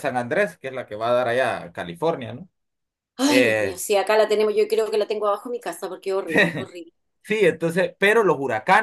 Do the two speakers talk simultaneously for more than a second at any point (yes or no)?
no